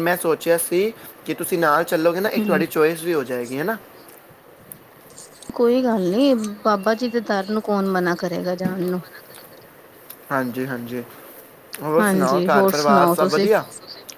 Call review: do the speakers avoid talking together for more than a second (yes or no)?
no